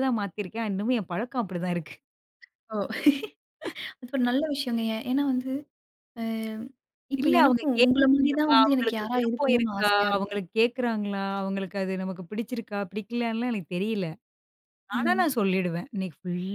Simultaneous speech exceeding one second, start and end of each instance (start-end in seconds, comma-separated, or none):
7.2-10.4